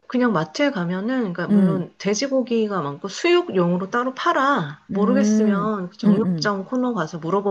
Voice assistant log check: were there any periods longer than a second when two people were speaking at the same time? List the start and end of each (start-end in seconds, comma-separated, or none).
4.9-6.5